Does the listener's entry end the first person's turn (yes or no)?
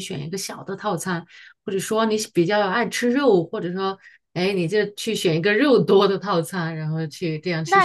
yes